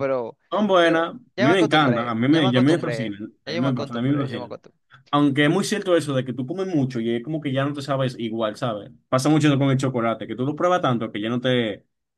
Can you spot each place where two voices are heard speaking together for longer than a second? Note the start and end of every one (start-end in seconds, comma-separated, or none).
0.8-4.6